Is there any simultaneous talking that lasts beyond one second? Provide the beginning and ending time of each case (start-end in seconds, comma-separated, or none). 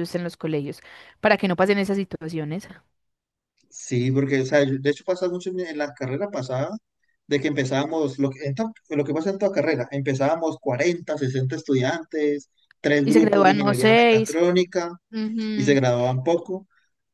13.0-14.4